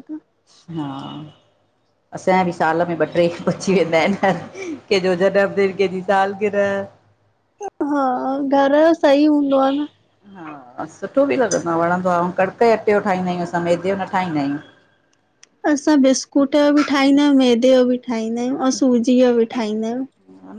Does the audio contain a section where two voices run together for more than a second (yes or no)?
no